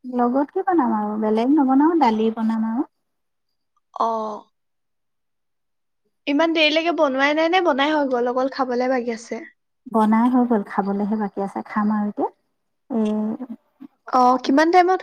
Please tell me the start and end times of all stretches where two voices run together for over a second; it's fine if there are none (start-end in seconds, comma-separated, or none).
none